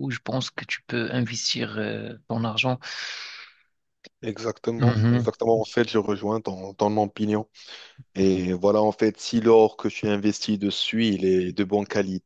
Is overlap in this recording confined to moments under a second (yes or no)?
yes